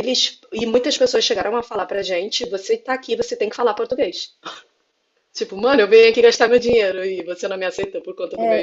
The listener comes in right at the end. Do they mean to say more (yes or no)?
yes